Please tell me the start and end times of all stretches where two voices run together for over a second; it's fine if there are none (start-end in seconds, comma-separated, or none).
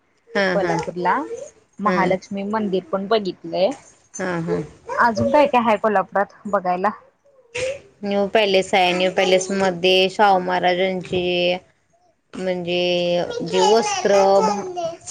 none